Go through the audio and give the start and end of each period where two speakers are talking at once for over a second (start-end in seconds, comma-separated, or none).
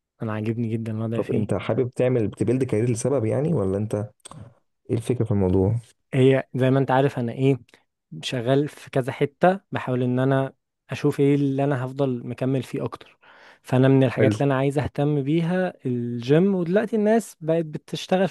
none